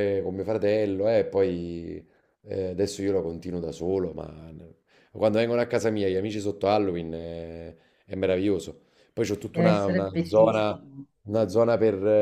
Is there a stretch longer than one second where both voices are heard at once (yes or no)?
yes